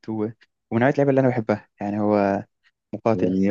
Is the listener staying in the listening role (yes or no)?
no